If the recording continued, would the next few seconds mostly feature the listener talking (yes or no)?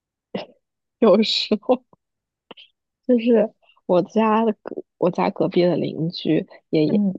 no